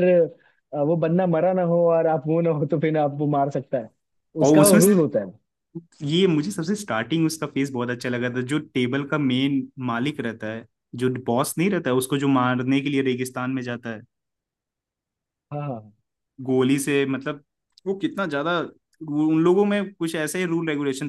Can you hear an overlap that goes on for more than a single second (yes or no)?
no